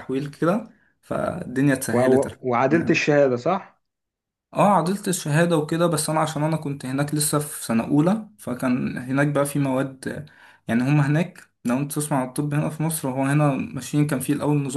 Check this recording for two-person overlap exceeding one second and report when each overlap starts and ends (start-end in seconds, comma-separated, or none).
none